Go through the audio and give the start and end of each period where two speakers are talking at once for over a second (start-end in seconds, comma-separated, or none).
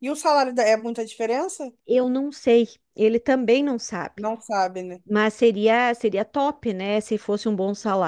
none